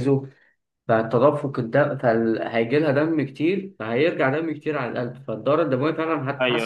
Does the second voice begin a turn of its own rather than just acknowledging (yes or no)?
no